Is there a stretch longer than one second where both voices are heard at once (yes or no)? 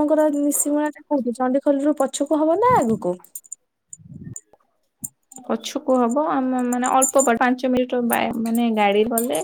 no